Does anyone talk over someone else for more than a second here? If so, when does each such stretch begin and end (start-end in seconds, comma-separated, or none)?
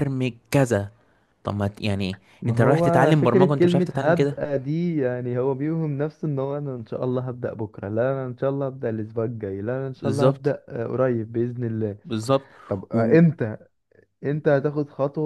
2.4-4.4